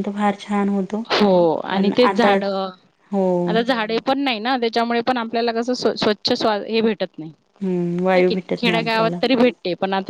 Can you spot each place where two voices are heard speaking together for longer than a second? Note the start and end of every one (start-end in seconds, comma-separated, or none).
7.6-9.2